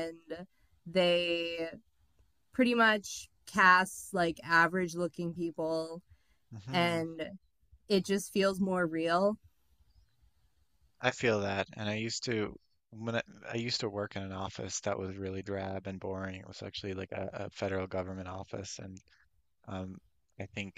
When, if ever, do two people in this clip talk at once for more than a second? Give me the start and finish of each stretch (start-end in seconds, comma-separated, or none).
none